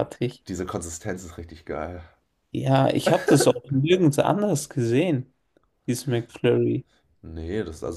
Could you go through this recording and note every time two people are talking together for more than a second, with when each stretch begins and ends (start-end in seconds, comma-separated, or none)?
none